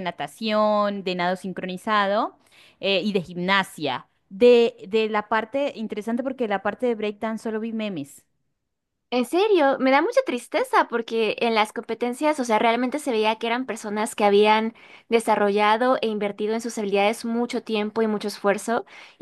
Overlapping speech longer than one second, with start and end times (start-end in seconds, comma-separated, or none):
none